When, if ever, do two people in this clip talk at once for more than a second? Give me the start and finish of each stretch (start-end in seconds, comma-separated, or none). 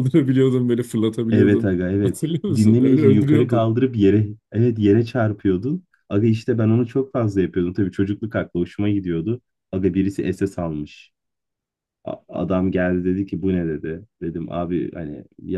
1.3-3.8